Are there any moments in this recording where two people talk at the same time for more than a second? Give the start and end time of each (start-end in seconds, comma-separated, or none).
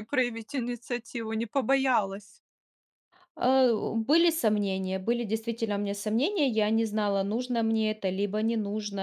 none